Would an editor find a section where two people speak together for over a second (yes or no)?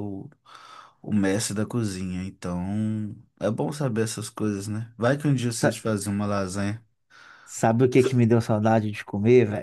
no